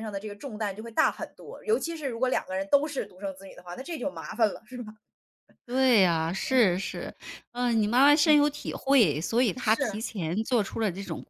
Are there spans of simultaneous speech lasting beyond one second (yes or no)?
no